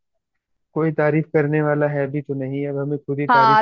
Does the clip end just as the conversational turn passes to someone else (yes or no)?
yes